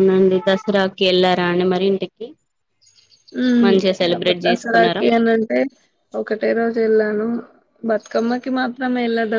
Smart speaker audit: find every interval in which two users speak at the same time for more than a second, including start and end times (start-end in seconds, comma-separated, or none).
3.6-5.0